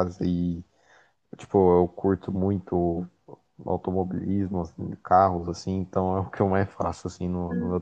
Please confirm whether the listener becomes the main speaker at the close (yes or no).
yes